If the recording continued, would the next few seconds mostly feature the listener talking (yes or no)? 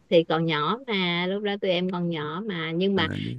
no